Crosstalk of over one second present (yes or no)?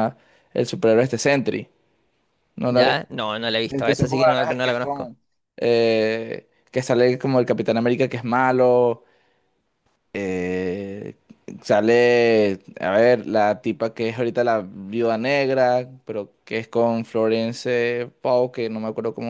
yes